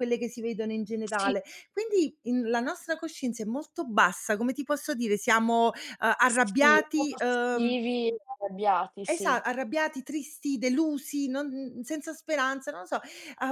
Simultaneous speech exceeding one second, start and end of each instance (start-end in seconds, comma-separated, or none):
6.2-7.8